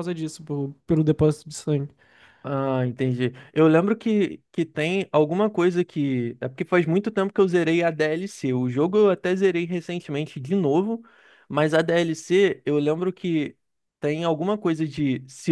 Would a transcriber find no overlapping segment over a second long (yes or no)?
yes